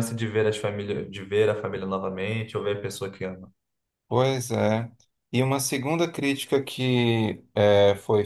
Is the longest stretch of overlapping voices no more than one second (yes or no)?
yes